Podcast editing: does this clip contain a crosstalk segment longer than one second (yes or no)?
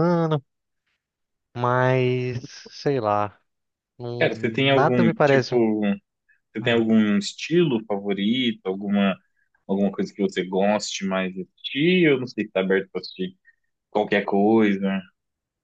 yes